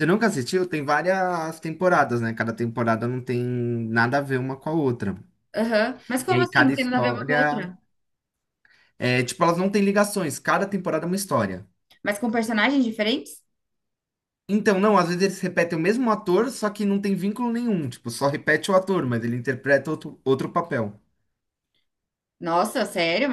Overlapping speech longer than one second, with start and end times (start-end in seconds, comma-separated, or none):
6.3-7.7